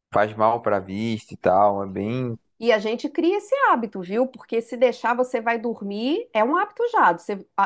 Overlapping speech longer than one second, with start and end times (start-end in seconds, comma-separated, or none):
none